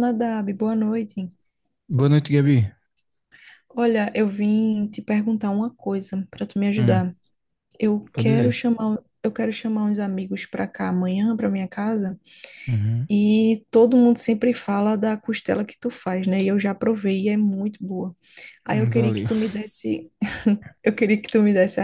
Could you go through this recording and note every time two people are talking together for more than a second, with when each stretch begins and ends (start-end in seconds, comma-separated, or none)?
none